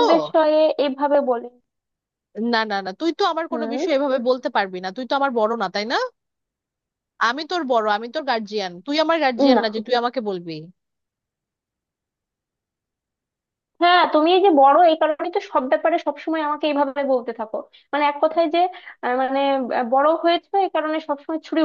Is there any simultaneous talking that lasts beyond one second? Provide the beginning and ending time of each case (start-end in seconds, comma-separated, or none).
none